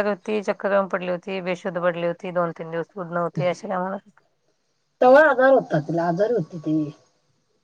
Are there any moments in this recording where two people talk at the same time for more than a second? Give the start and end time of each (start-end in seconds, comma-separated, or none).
none